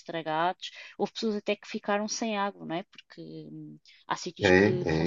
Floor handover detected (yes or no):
yes